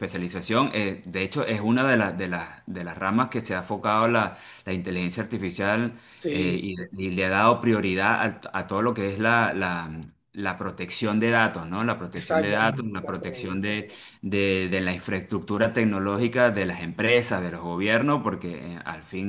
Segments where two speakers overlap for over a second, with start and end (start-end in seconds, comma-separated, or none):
12.1-14.0